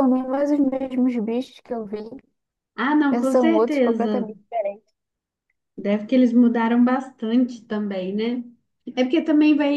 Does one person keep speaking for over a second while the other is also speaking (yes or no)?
yes